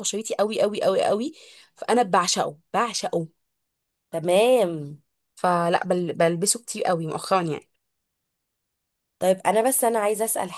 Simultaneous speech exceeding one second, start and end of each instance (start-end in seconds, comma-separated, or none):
none